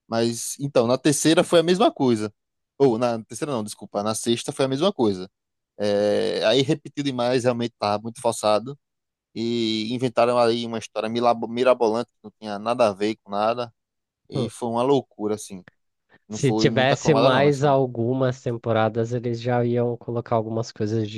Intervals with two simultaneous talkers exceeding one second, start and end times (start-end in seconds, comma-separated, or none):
16.3-17.8